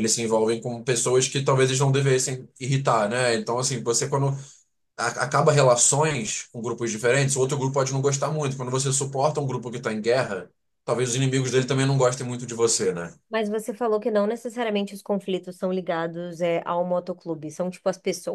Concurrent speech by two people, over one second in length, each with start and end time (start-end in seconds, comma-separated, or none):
none